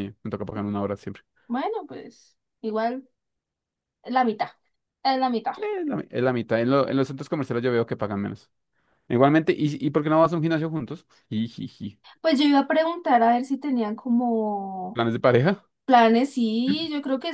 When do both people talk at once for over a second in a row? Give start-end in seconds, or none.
none